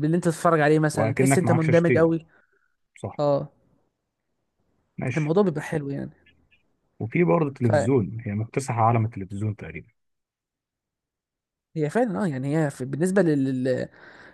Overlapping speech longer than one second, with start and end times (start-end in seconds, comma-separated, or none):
0.9-2.1